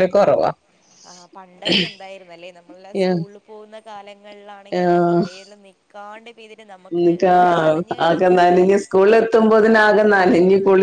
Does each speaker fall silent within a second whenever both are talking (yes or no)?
yes